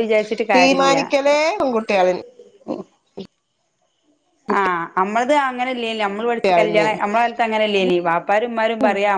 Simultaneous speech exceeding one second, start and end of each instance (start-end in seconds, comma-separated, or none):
none